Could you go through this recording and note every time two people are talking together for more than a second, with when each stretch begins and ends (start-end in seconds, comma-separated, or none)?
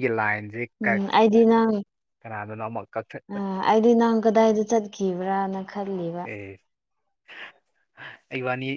none